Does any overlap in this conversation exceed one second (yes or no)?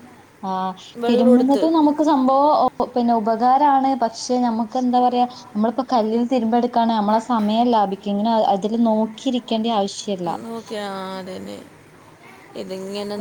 no